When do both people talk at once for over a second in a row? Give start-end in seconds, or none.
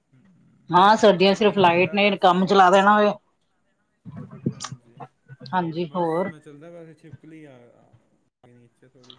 none